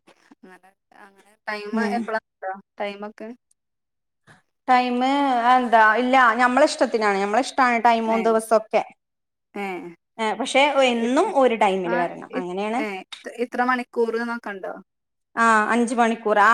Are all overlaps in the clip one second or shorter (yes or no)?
yes